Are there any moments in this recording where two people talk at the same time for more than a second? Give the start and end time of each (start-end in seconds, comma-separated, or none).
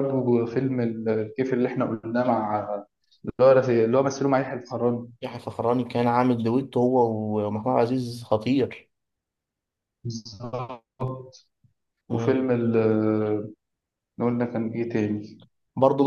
none